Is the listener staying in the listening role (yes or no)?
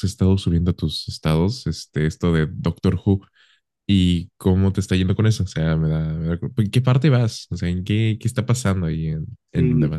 no